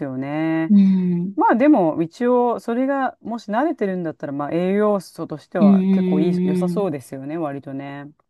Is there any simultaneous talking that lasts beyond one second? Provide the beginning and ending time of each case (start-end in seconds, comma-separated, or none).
5.6-6.9